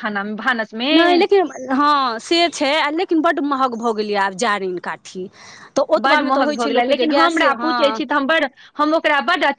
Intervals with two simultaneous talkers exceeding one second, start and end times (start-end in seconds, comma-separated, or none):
6.0-8.0